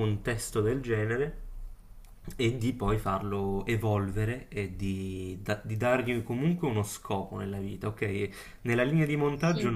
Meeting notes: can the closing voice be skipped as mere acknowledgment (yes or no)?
yes